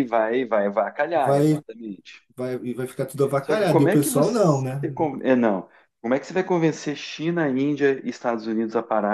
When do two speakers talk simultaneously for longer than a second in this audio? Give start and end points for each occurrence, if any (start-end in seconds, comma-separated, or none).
3.4-4.9